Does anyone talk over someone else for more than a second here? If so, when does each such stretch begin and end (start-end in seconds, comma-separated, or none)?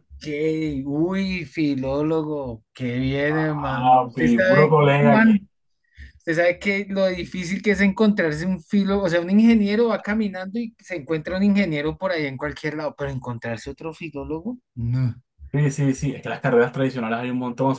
3.8-5.3